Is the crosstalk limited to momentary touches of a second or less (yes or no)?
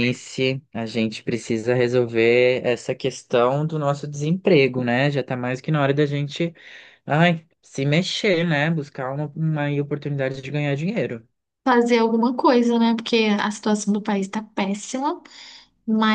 yes